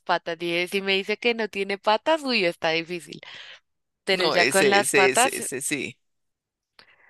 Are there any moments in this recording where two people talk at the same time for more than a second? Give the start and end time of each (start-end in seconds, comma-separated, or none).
4.1-5.4